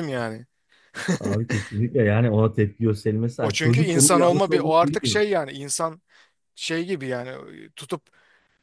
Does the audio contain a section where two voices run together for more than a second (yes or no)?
yes